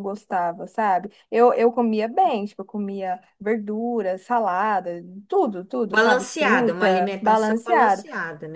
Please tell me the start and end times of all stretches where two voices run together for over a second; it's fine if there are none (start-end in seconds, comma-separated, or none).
5.9-8.0